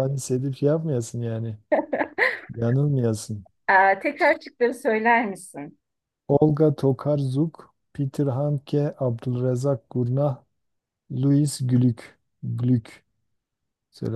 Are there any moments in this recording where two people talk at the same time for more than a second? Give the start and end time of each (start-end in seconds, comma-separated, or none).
none